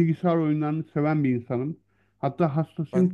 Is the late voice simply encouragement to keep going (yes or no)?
yes